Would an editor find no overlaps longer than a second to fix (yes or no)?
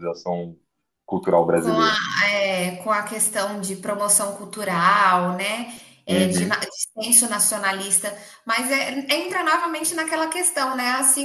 yes